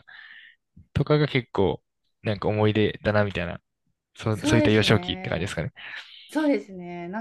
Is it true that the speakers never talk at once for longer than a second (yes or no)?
no